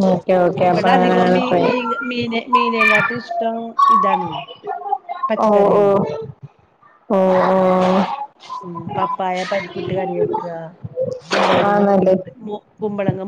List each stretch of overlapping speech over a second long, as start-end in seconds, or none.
0.7-3.1